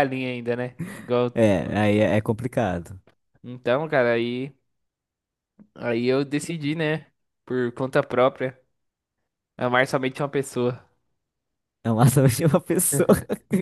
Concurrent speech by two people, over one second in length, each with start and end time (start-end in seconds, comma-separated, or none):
none